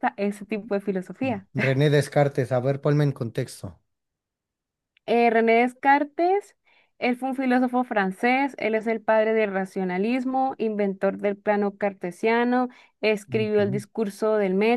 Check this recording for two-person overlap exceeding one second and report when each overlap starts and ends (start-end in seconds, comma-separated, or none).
none